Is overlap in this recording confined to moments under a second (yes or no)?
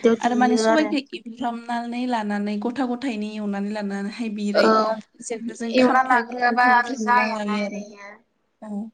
no